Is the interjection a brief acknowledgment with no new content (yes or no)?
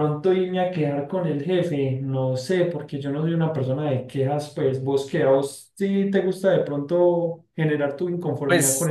no